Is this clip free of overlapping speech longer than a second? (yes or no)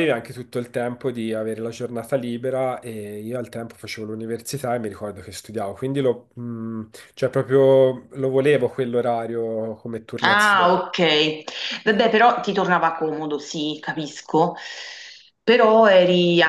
yes